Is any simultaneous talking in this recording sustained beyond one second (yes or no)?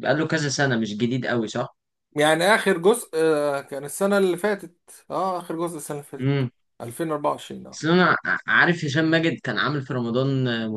no